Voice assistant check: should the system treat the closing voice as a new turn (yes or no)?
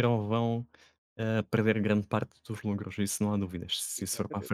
yes